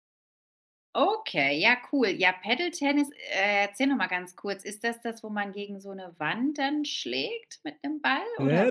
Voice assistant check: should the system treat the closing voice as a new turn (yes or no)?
yes